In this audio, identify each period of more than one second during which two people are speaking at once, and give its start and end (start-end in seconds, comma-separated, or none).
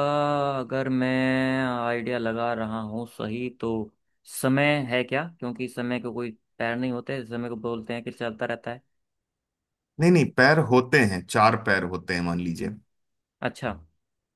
none